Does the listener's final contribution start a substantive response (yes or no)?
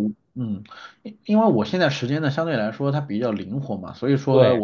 no